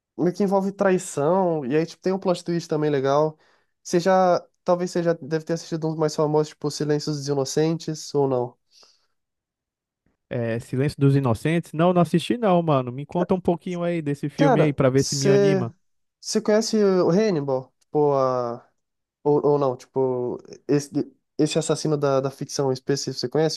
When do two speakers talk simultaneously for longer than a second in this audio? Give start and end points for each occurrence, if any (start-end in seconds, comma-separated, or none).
14.3-15.7